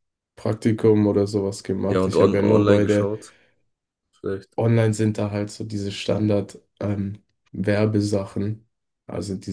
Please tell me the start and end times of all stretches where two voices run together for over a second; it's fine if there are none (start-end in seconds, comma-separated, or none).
1.9-3.1